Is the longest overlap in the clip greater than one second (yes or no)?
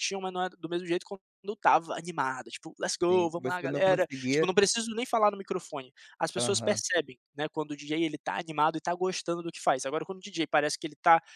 yes